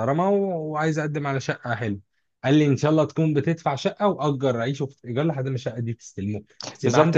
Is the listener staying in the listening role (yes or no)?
no